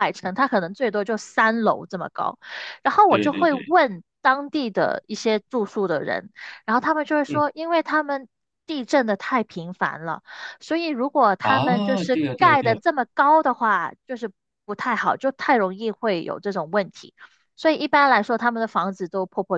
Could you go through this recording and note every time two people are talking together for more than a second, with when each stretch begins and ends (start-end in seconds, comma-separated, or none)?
11.4-12.8